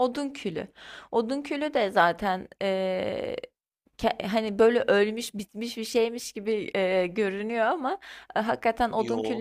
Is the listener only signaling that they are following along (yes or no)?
yes